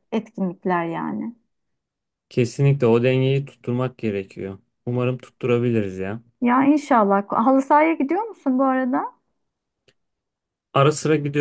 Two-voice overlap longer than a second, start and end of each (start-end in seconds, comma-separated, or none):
none